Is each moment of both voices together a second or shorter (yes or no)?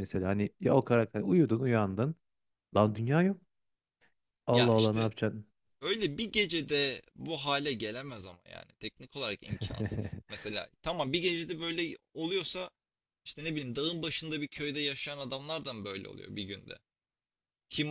yes